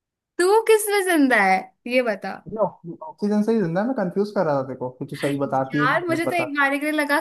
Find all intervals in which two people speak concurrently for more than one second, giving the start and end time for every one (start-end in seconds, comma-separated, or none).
5.2-6.5